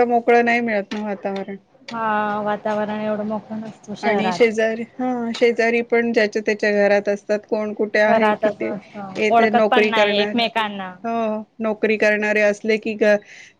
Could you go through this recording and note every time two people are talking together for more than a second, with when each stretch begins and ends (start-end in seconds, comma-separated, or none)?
8.1-10.4